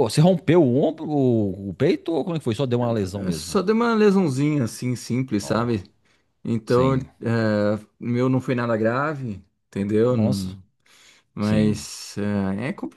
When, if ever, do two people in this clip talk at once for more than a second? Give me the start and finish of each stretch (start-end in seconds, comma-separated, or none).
none